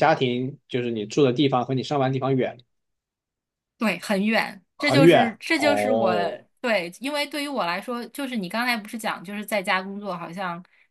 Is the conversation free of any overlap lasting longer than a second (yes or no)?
no